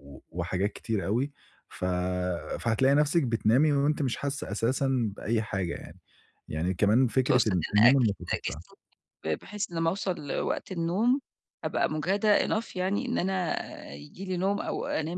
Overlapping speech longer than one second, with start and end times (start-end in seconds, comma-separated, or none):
7.2-8.6